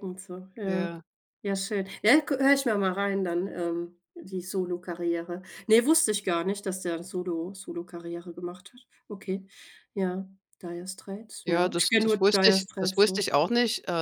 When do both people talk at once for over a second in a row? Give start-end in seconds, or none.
11.4-13.2